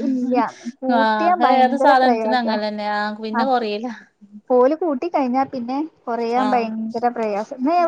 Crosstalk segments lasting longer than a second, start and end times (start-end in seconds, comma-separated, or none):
1.0-2.6